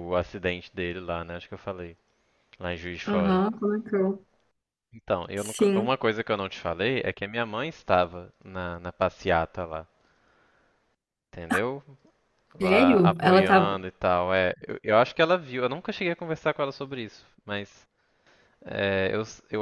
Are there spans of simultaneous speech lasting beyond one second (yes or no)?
yes